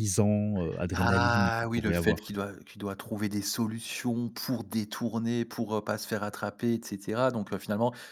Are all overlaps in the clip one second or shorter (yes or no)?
no